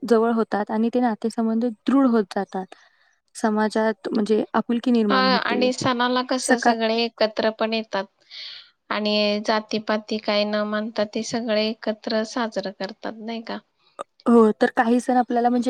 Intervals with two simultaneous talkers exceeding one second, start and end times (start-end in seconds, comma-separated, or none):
none